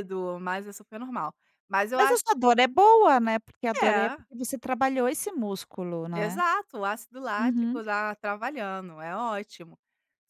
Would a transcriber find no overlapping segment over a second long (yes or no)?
yes